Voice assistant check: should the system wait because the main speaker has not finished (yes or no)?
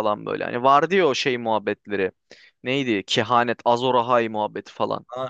no